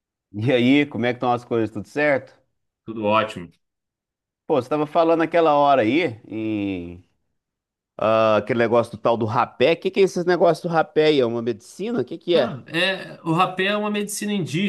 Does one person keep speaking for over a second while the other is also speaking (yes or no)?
no